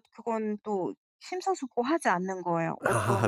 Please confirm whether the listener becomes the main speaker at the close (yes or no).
yes